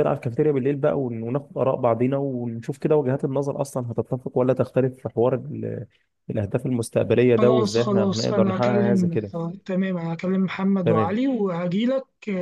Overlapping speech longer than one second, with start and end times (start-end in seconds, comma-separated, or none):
7.4-9.3